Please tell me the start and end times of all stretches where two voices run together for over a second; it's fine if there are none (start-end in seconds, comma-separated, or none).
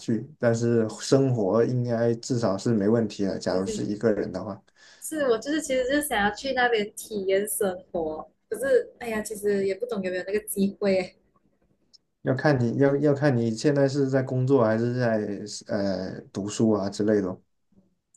none